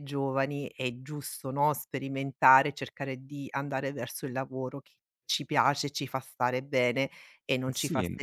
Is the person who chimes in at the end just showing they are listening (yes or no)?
no